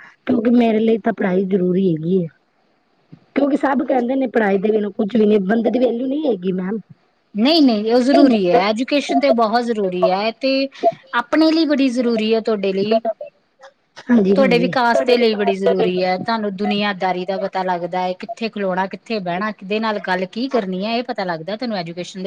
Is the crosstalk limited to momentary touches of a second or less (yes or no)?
yes